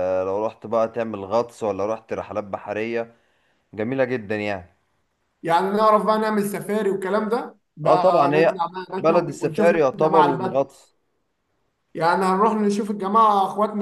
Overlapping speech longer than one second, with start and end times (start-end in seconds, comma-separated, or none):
7.8-10.7